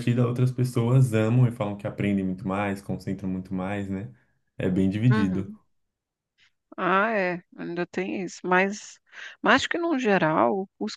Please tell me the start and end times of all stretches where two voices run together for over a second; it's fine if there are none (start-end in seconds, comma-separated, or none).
none